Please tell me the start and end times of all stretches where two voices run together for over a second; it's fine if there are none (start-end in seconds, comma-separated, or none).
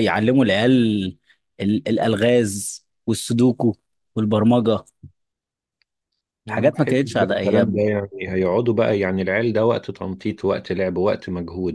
6.5-7.8